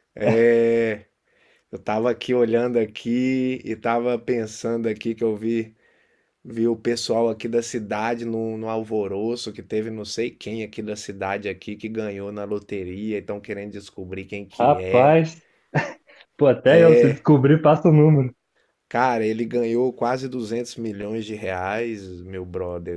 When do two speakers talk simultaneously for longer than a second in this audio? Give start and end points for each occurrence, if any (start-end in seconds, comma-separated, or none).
none